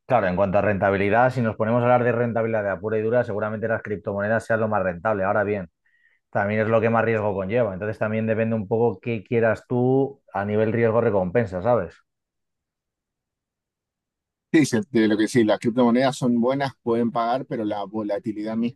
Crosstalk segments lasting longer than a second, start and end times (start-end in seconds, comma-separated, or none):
none